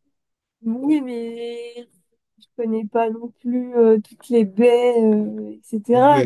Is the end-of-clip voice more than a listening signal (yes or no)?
yes